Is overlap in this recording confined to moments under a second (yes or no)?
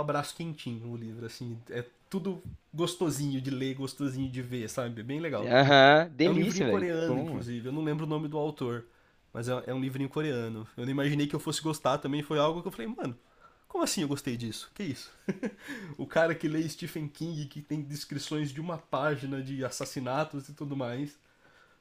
no